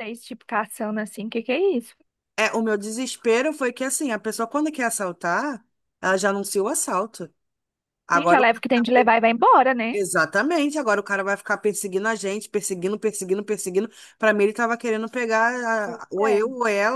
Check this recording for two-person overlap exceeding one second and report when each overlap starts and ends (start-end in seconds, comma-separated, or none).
none